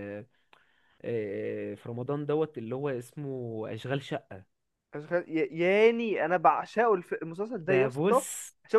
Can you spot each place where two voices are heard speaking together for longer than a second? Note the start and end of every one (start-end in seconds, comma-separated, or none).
none